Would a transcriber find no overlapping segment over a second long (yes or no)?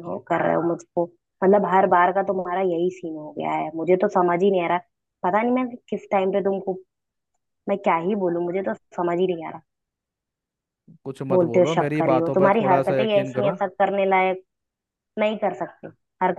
no